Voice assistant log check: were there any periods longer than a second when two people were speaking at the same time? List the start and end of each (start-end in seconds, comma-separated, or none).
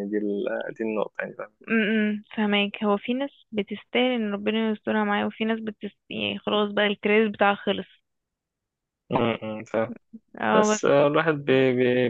none